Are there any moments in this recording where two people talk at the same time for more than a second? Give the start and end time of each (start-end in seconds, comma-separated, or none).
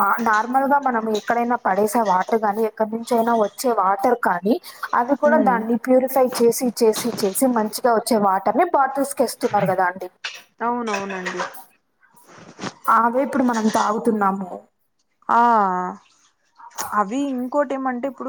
none